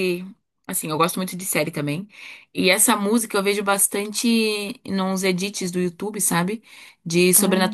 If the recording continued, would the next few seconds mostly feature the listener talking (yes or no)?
no